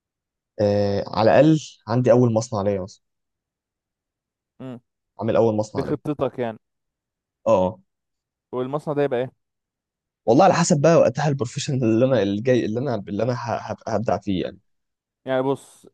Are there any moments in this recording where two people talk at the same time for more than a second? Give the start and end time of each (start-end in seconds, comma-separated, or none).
none